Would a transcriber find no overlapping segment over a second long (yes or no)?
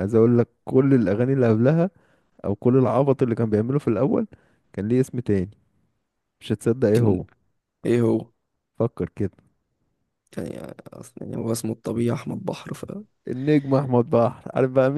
yes